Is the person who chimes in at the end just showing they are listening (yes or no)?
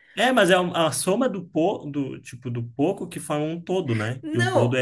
no